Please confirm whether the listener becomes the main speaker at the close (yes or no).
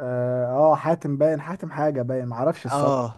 yes